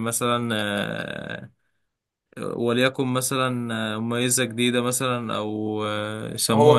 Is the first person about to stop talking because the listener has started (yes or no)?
yes